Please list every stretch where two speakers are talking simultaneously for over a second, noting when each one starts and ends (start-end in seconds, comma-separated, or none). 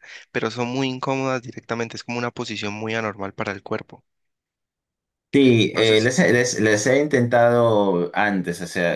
none